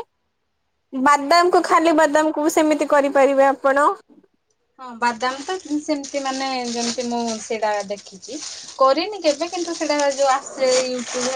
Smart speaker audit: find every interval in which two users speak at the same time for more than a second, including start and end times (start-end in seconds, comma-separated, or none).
none